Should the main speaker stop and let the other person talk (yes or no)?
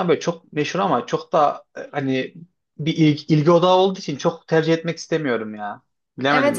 yes